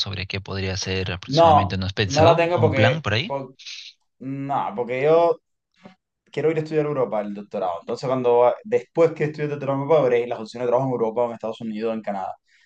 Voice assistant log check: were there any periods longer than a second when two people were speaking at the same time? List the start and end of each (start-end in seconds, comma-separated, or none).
1.2-3.4